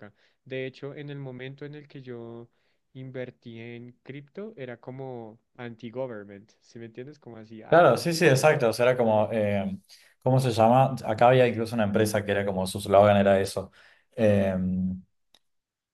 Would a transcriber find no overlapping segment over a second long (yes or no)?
yes